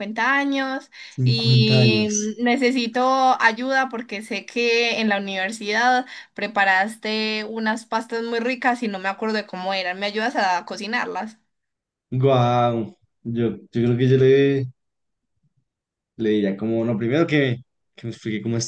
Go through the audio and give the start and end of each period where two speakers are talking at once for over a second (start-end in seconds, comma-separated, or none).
1.1-2.4